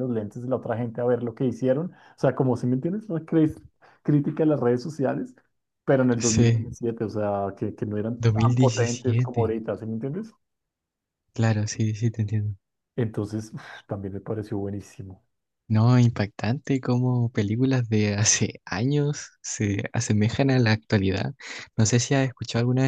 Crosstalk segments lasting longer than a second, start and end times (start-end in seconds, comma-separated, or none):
8.2-9.6